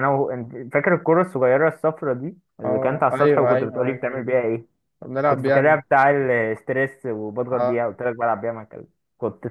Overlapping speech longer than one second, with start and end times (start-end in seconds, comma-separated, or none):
2.6-4.3